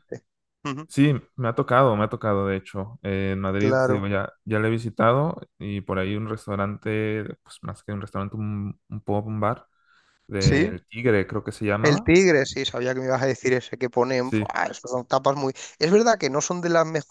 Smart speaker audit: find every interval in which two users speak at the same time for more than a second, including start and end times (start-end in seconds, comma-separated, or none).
none